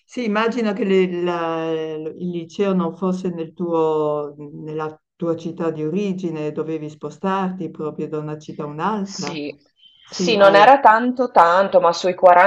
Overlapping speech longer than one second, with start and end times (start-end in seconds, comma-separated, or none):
none